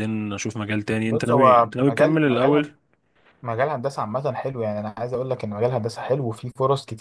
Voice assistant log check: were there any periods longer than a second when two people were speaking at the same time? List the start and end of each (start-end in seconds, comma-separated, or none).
1.1-2.7